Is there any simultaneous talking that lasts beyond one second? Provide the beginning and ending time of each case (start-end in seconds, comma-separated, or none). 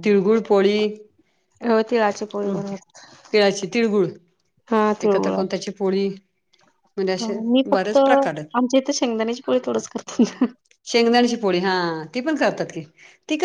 7.2-8.7